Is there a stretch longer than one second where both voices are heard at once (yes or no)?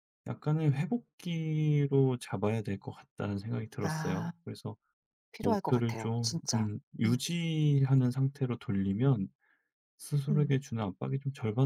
yes